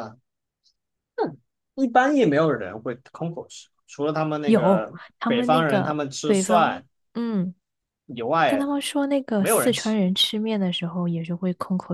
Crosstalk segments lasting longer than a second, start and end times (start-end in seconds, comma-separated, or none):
4.5-6.8